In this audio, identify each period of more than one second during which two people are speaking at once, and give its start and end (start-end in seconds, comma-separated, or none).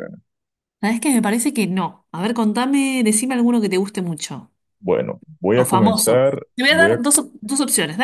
5.5-7.0